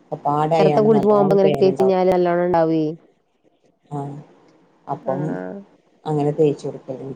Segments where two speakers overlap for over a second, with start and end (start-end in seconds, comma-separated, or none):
0.6-2.0